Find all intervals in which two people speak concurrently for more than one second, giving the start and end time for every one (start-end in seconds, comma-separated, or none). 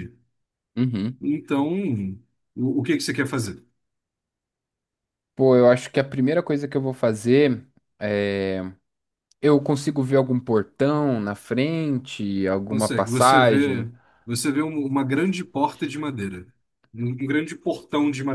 12.7-13.9